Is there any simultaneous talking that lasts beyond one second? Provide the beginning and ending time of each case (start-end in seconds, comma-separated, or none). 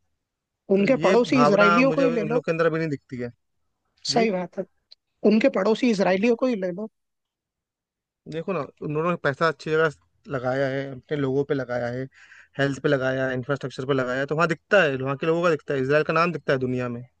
0.8-2.4